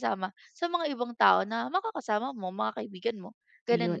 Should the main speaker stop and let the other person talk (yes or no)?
yes